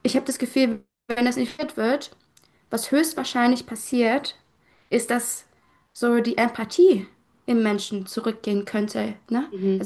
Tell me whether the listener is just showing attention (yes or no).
yes